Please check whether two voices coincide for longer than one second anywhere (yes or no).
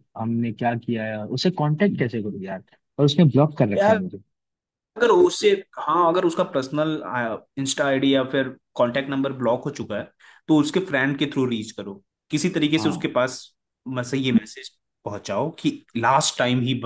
no